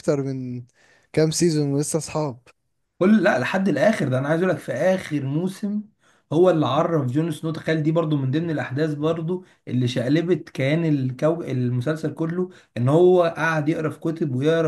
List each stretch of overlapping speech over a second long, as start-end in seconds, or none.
none